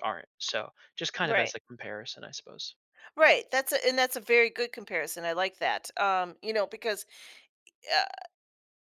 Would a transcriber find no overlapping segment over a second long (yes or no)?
yes